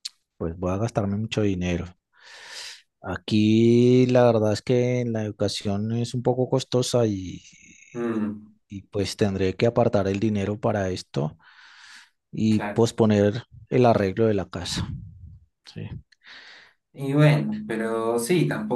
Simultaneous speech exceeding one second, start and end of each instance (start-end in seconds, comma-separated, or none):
none